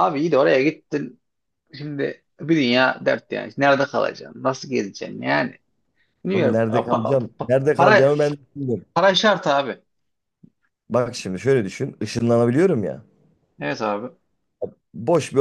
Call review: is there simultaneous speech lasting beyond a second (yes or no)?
yes